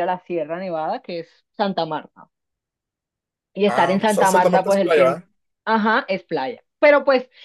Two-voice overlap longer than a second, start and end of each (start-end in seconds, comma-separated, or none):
3.7-5.2